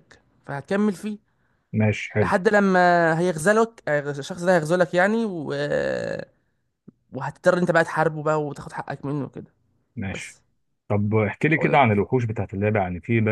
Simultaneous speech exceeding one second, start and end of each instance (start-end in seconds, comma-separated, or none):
none